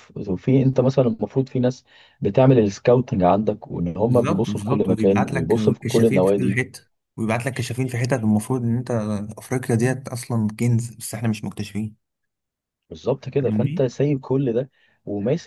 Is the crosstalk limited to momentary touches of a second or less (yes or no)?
no